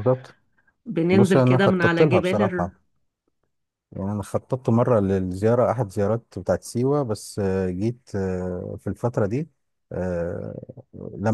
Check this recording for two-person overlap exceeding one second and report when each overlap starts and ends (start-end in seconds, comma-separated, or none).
1.1-2.4